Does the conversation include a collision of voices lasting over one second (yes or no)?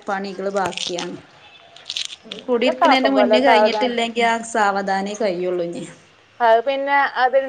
yes